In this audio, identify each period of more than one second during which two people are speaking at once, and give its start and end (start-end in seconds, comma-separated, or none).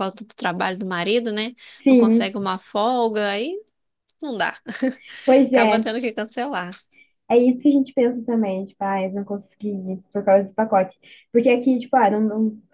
none